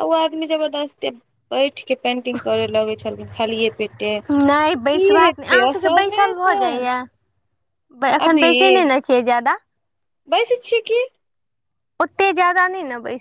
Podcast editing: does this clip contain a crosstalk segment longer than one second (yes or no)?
yes